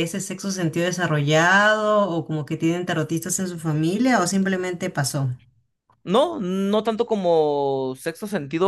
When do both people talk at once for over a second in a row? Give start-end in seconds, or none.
none